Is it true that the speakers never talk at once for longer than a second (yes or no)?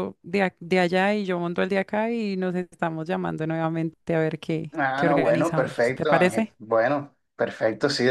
no